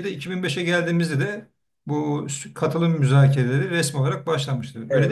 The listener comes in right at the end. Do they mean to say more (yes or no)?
yes